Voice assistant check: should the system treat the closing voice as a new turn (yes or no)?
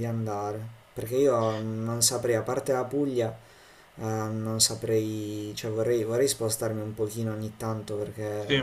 no